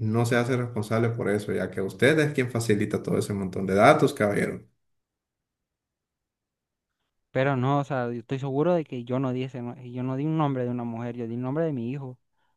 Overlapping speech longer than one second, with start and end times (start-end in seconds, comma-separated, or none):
none